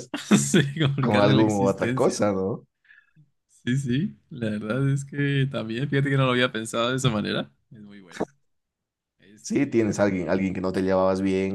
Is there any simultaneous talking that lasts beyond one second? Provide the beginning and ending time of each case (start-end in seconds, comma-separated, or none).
1.0-2.3